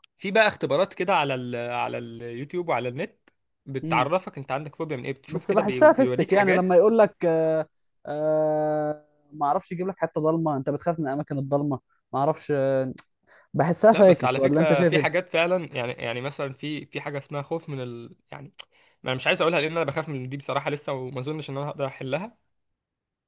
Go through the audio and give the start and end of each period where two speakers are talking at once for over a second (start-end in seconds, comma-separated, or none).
5.3-6.8, 13.9-15.2